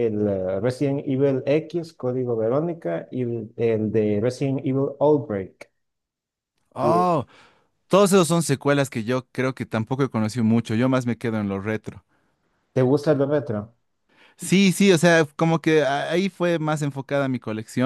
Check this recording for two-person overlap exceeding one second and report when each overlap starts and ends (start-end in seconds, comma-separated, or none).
none